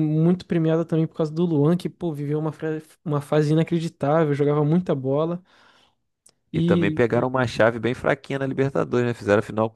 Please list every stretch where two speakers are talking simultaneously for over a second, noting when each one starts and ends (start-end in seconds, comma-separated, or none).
none